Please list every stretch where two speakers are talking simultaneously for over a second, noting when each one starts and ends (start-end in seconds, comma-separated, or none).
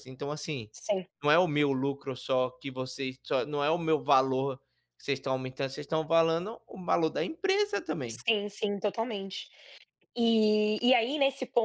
none